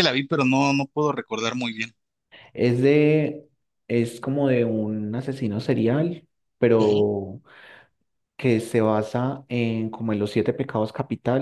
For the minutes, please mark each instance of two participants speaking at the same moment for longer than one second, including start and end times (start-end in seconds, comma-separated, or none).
none